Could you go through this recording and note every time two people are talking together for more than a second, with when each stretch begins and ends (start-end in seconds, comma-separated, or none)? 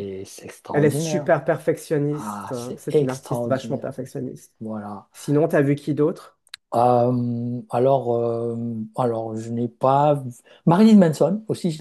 2.1-3.9